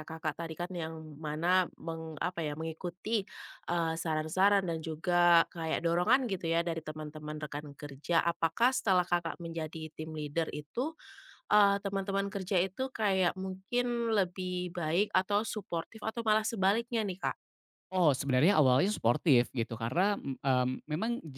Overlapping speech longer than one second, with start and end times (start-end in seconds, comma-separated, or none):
none